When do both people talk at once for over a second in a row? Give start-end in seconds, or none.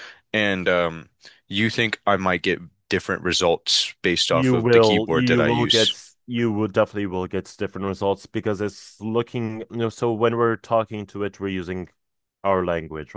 4.3-5.9